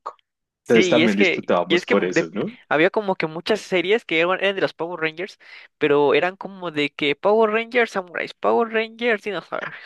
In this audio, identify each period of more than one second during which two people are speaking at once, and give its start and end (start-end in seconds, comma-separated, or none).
0.7-2.2